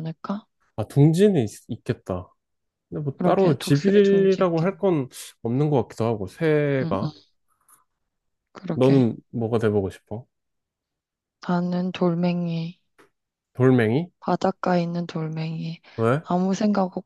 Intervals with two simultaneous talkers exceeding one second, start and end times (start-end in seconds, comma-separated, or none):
3.2-4.7